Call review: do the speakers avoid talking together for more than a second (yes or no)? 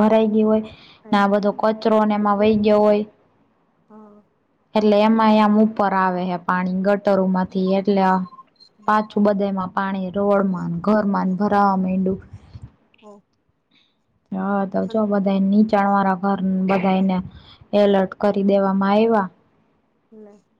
no